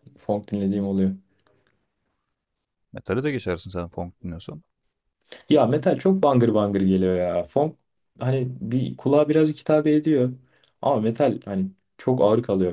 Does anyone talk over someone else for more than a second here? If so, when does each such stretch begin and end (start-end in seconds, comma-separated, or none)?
none